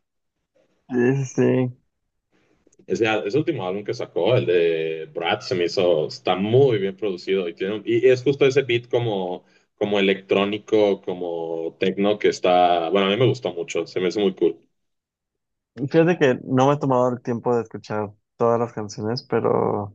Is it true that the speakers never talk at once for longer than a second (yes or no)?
yes